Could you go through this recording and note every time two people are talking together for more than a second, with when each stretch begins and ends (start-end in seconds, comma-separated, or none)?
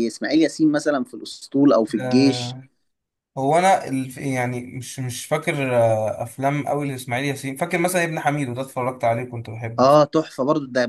none